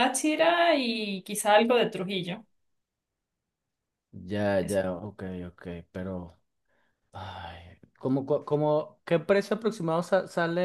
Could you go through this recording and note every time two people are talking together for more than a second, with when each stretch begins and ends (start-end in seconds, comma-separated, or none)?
none